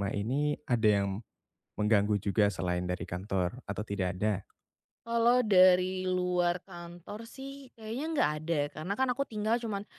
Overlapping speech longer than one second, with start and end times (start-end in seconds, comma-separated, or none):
none